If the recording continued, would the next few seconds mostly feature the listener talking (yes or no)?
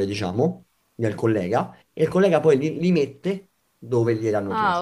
yes